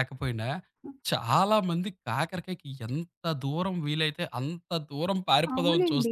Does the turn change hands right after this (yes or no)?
yes